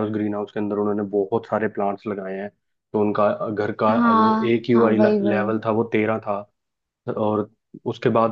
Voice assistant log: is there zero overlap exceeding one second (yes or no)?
no